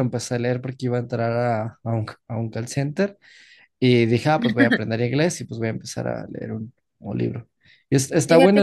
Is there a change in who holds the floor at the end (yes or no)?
no